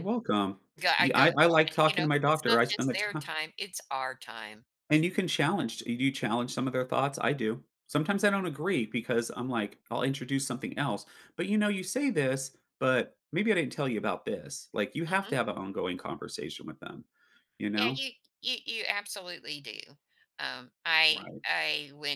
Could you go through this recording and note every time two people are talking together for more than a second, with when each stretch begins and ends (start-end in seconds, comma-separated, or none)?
1.0-3.2